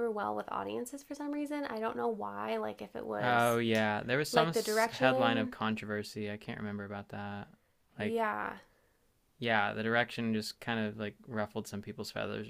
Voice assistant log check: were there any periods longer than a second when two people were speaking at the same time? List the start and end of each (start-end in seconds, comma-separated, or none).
4.3-5.5